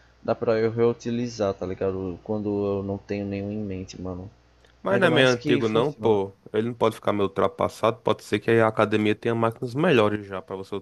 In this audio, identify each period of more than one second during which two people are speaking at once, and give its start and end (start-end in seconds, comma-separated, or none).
4.9-6.2